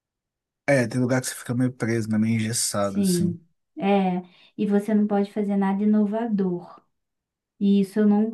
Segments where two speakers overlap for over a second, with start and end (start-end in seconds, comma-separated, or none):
none